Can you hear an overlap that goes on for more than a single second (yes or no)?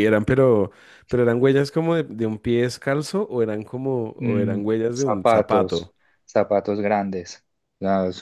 yes